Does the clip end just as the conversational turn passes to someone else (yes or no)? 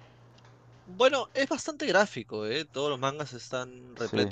no